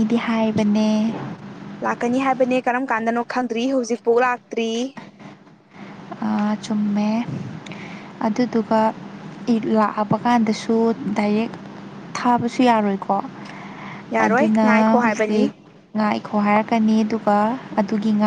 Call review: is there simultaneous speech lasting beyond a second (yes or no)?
yes